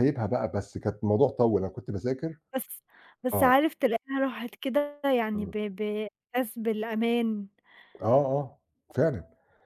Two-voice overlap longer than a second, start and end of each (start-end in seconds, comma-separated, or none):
none